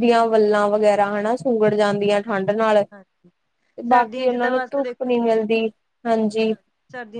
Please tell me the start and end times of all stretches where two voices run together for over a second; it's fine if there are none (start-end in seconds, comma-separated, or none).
3.9-5.3